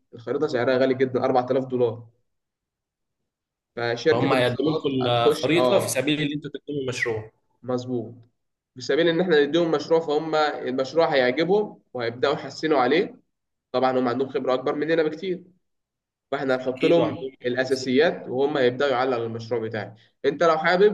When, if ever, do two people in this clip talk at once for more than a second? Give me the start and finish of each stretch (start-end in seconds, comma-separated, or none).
4.1-6.0, 16.7-18.1